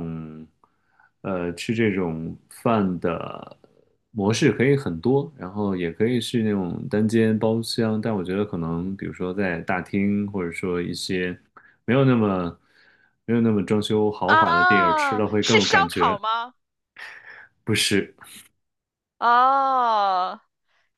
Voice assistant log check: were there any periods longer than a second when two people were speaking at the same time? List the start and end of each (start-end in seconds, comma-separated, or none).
14.2-16.2